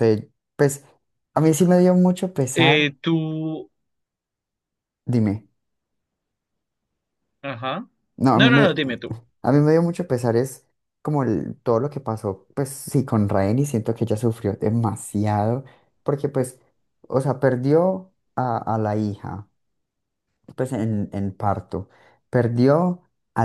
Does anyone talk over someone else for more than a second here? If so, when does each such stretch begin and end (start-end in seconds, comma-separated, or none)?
none